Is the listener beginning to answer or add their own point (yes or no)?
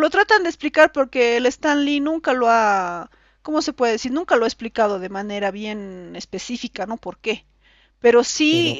no